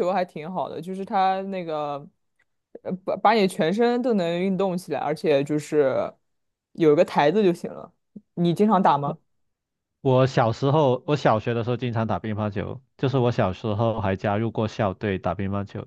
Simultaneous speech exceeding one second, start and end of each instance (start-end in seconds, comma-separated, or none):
none